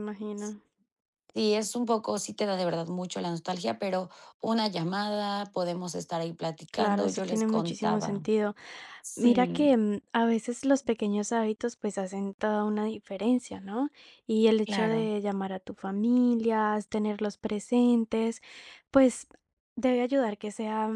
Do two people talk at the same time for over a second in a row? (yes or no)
yes